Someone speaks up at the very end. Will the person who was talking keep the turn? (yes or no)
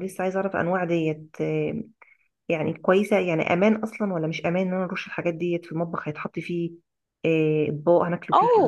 no